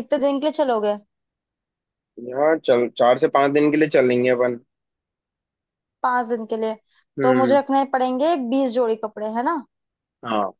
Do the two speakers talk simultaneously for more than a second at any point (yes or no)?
no